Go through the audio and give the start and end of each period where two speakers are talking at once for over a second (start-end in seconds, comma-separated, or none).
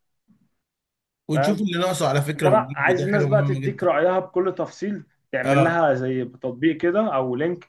2.4-3.9